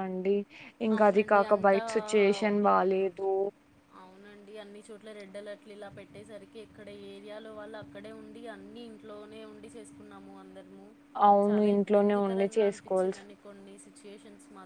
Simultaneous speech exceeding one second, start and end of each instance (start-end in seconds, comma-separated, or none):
11.5-13.2